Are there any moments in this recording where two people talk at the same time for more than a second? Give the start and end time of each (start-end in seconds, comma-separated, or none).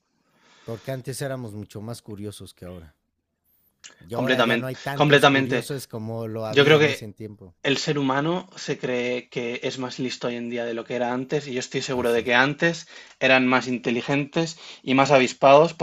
4.1-5.7